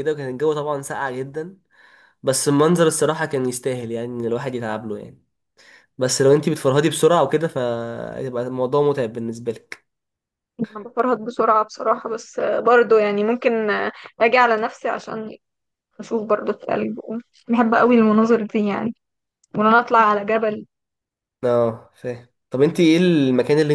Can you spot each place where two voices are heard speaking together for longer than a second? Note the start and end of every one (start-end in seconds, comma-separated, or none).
none